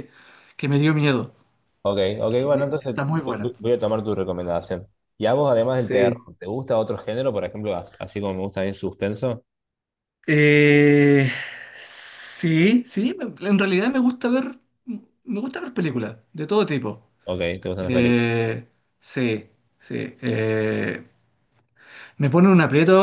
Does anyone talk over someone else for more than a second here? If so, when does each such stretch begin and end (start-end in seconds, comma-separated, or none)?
2.3-3.5